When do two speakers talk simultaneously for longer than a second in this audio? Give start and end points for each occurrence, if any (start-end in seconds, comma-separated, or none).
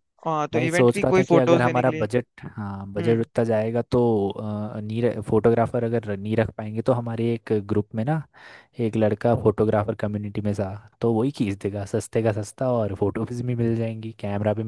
0.5-2.1